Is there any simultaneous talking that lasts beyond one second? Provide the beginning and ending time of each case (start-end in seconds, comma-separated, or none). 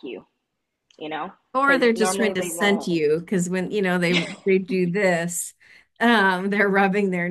1.5-2.9